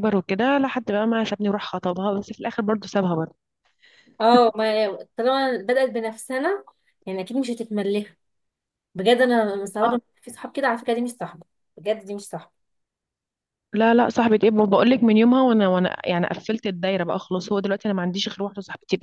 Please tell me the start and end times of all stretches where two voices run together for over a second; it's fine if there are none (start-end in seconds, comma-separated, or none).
none